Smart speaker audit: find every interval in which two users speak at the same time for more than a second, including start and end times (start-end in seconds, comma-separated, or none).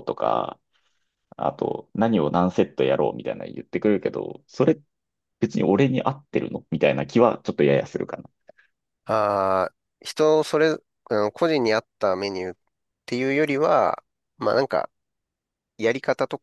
none